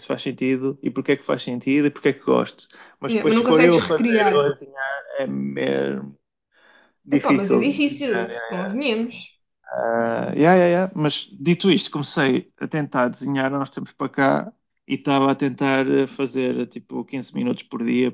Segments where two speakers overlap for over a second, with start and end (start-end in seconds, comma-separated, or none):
3.1-4.5, 7.1-8.3